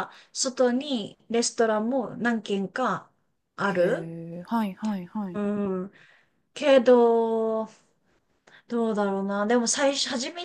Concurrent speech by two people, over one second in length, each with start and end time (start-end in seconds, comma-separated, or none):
none